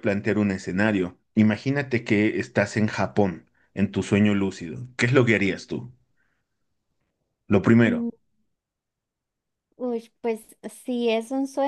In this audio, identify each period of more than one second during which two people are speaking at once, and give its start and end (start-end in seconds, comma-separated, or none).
none